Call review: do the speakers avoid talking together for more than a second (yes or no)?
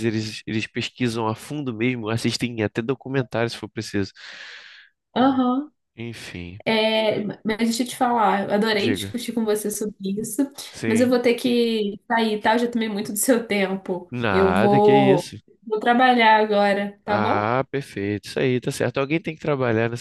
no